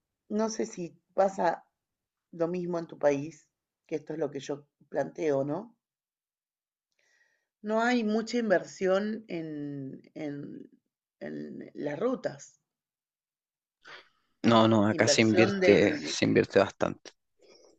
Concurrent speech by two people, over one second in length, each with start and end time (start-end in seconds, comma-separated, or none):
14.9-16.2